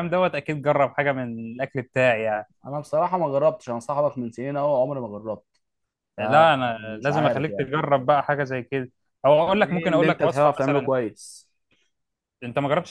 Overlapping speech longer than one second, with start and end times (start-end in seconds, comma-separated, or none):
6.2-7.7, 9.4-10.9